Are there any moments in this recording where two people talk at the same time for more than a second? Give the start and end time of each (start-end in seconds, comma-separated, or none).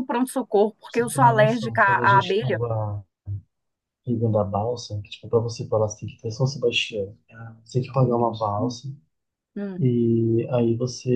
0.8-2.6